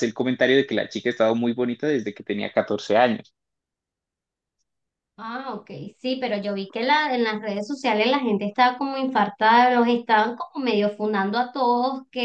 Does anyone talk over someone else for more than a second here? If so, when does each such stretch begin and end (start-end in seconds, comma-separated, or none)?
none